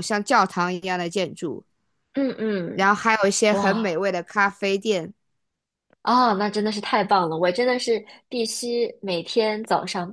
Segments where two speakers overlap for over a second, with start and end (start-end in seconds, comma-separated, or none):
none